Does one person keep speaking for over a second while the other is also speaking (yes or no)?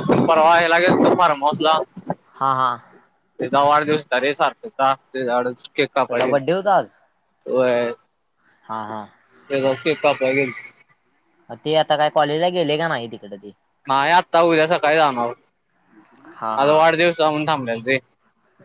no